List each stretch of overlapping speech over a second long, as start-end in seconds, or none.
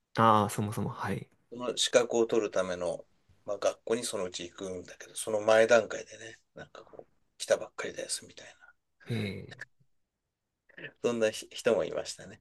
none